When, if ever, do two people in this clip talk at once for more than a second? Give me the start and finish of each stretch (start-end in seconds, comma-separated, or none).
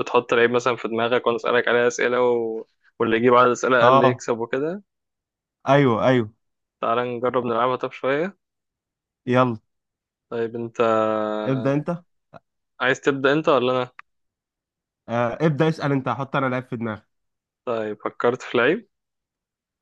none